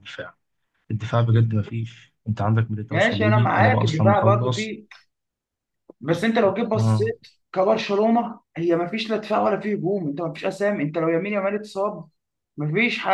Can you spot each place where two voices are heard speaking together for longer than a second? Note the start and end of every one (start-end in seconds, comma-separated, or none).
2.9-4.8